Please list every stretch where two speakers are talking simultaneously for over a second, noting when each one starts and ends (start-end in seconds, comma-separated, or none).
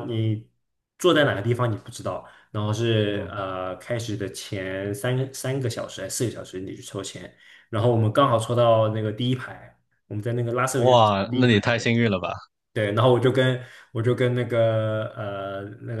10.7-12.0